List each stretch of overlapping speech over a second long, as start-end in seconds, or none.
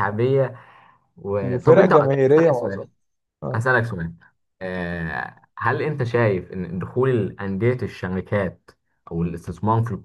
1.4-2.9